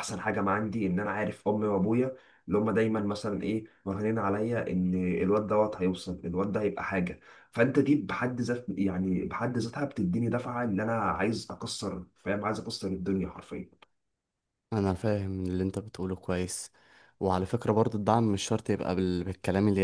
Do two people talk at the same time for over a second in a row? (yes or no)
no